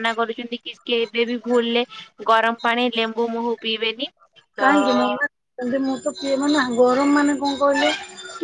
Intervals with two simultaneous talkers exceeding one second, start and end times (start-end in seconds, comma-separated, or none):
none